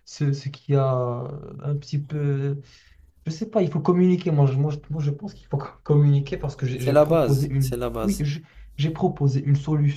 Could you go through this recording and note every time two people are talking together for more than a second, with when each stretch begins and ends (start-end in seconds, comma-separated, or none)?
6.7-8.2